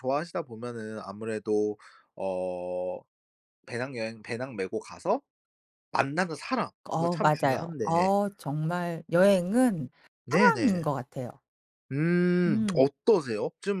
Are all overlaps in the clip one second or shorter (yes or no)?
no